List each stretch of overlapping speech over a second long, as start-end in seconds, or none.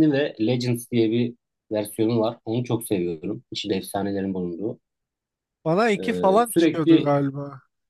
5.9-7.1